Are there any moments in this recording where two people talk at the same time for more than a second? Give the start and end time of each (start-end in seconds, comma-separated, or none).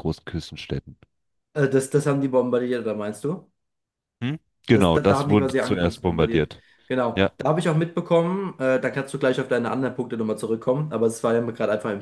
4.7-6.5